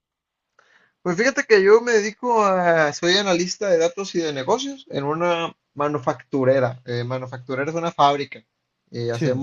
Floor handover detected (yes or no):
no